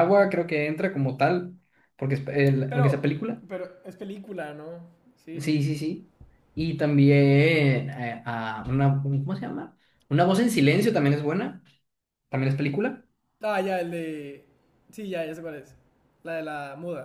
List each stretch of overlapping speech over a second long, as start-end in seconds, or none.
none